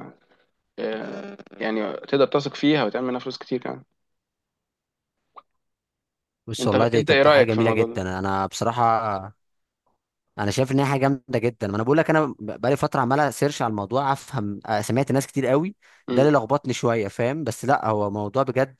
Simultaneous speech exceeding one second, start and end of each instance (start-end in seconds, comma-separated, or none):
6.6-8.0